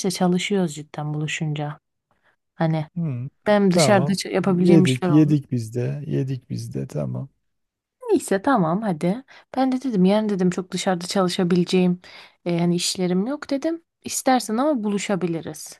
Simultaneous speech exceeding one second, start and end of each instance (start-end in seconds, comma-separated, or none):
3.7-5.4